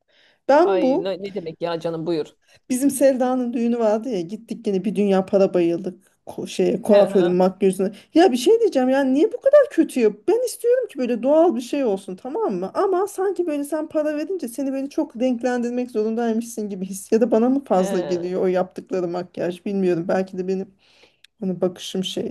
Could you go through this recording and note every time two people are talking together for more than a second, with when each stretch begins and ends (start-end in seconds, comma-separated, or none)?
none